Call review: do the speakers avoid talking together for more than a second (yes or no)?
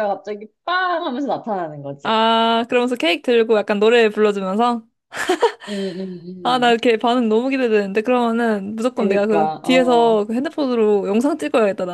no